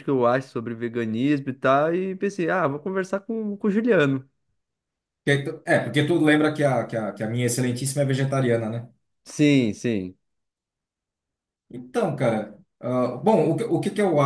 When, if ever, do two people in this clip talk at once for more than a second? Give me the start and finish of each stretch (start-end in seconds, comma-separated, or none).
none